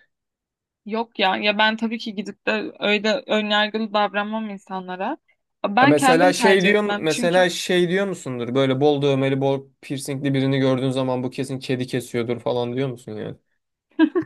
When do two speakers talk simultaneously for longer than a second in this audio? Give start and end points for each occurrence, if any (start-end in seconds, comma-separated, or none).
5.8-7.5